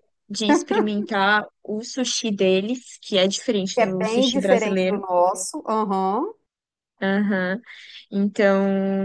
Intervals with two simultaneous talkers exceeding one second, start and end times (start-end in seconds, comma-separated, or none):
3.7-5.0